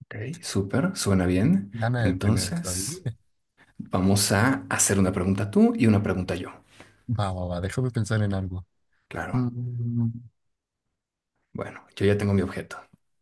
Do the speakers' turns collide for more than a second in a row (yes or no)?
yes